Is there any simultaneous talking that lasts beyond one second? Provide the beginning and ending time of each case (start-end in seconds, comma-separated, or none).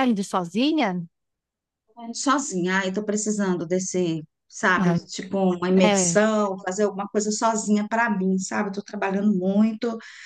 none